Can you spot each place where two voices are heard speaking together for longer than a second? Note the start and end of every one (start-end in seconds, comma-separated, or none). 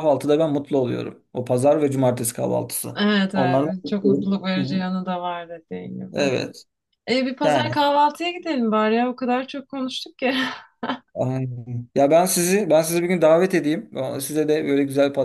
3.0-4.8